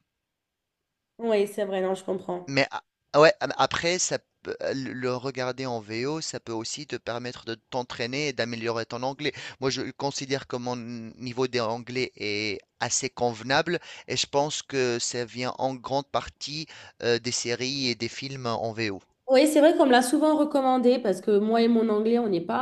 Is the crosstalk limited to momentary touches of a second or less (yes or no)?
yes